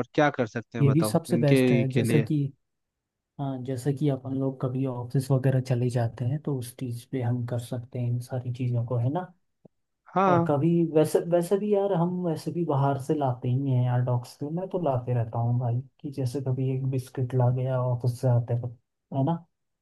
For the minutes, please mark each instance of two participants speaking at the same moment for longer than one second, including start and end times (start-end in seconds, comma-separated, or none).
0.8-2.3